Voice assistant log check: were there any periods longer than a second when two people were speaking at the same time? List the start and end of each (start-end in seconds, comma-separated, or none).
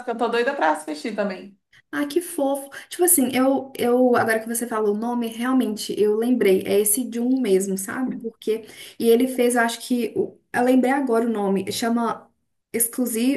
none